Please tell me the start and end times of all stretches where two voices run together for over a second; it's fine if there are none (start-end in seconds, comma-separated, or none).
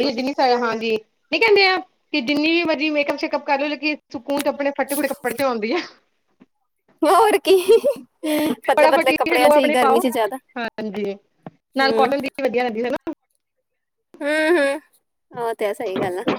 8.7-10.0